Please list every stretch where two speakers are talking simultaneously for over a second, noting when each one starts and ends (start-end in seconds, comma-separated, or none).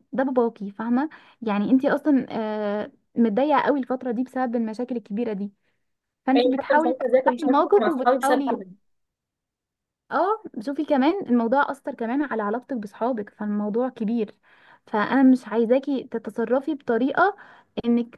6.3-8.4